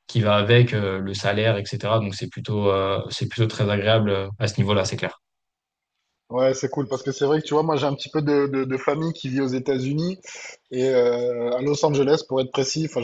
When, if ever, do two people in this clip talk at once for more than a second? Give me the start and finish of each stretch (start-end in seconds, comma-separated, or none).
none